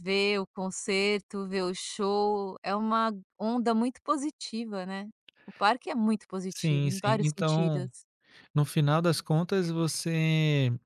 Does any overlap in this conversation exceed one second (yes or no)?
yes